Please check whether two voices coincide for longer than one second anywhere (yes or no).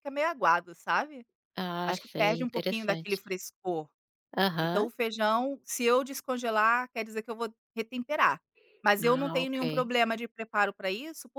yes